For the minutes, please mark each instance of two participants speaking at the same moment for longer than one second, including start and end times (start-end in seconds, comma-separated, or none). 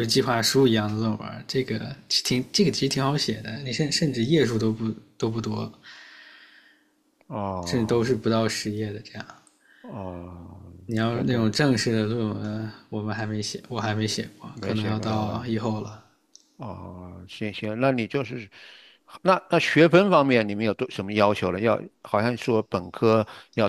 14.5-16.0